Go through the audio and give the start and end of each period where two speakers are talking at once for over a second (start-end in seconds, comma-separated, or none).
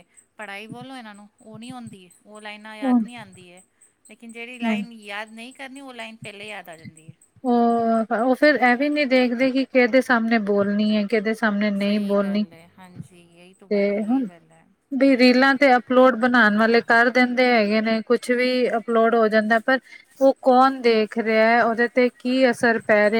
none